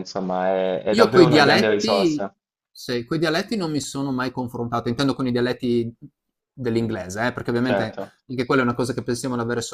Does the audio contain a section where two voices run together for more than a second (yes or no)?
yes